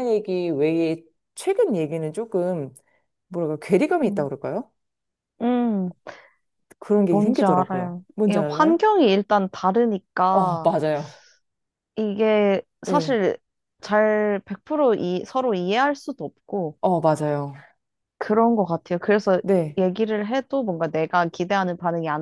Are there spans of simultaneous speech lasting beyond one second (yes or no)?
yes